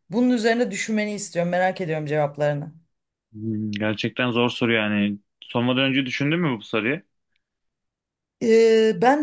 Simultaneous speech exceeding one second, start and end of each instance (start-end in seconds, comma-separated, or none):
none